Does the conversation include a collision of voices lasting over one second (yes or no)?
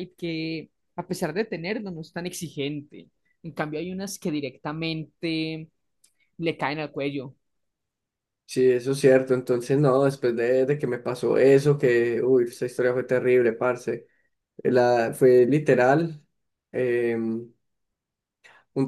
no